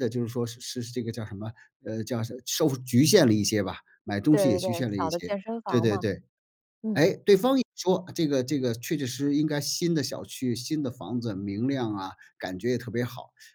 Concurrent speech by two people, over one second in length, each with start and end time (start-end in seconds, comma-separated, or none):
4.3-6.0